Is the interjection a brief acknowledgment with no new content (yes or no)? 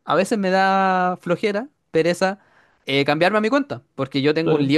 yes